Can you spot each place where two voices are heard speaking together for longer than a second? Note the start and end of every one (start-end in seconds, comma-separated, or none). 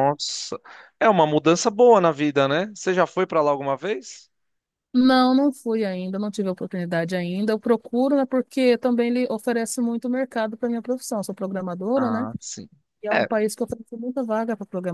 none